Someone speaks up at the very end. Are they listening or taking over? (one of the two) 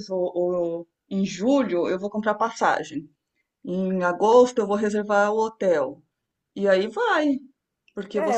taking over